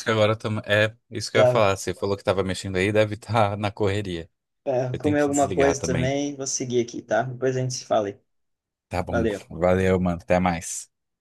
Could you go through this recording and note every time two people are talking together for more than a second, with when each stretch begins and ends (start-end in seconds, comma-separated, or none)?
4.9-6.2